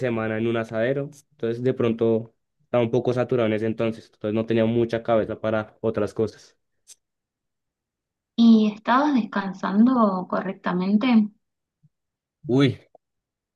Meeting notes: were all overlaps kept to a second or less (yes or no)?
yes